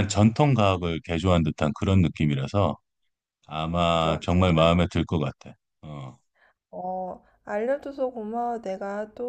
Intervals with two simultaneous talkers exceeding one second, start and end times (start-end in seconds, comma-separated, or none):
none